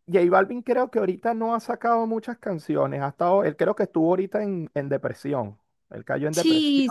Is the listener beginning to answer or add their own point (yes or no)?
yes